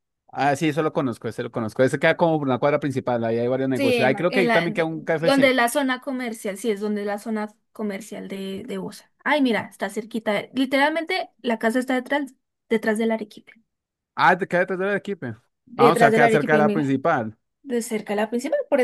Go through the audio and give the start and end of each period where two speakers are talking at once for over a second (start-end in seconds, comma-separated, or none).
3.7-5.6, 15.7-17.0